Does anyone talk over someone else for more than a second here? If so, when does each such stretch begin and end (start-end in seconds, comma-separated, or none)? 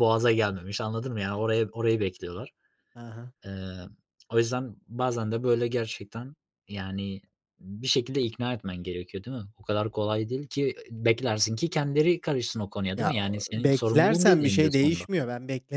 13.0-15.0